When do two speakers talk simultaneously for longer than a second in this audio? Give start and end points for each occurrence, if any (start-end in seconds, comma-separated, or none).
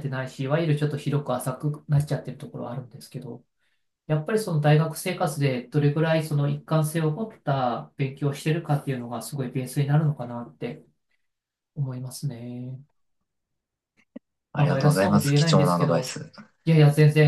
14.5-16.2